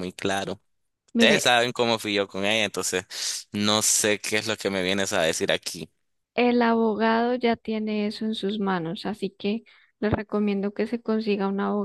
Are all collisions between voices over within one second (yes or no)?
yes